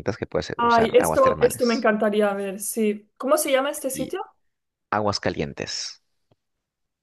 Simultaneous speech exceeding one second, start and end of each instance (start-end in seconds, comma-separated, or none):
0.6-1.9